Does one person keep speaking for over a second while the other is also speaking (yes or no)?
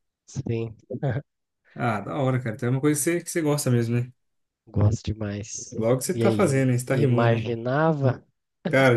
yes